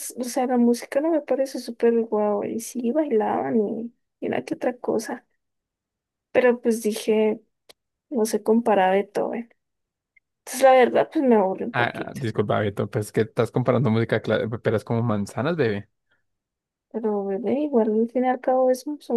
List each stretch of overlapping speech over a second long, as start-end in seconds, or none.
none